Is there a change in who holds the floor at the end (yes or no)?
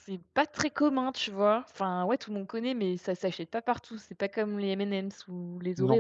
yes